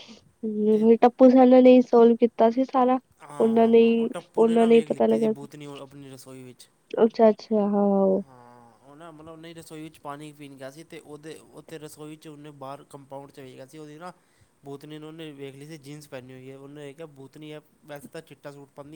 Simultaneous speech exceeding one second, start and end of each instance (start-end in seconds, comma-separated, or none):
3.4-5.5